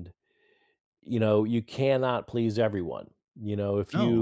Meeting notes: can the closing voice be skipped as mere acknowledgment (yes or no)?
yes